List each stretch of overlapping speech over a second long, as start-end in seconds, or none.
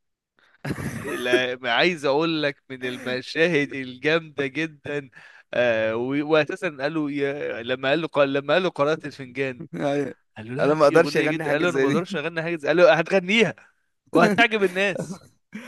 10.6-12.0